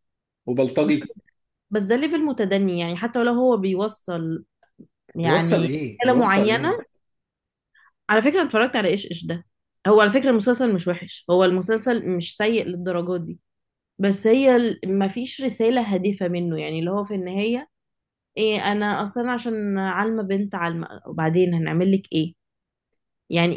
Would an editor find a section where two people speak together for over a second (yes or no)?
yes